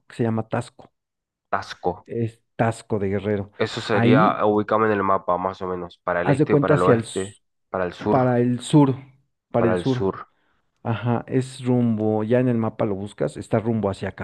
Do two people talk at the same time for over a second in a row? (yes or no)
yes